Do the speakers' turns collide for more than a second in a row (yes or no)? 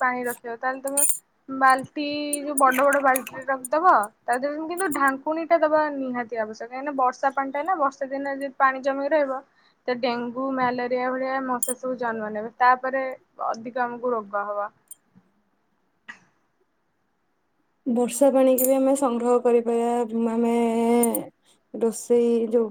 no